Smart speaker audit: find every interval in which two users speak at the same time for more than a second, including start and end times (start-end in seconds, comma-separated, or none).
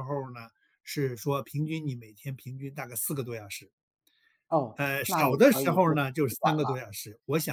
4.8-6.9